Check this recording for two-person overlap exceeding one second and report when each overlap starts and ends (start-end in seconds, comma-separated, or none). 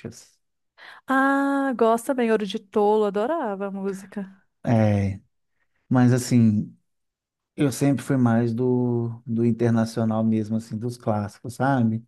none